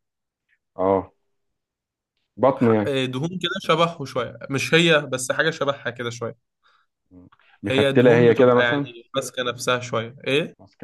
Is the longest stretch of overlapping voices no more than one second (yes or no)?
no